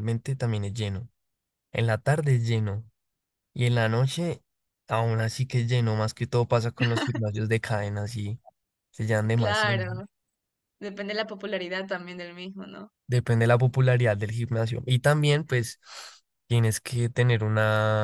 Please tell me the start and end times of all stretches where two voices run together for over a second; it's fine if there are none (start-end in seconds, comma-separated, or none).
none